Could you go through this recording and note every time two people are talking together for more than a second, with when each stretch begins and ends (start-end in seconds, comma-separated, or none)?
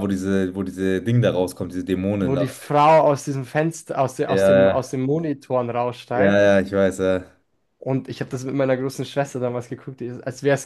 none